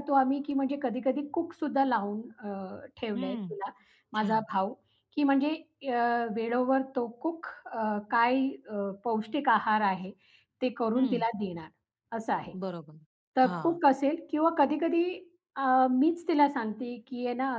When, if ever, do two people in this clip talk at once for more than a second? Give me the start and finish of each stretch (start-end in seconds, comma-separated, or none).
none